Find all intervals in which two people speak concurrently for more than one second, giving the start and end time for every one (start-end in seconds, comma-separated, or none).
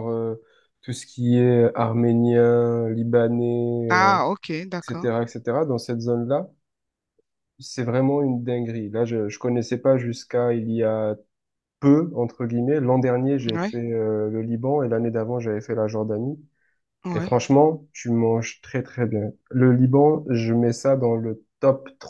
3.9-5.1